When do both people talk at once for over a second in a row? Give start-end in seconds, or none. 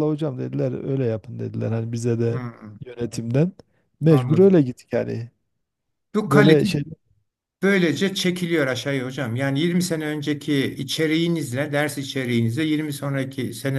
none